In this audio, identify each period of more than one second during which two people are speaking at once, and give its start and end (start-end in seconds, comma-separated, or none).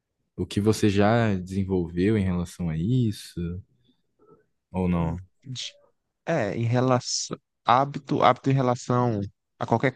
none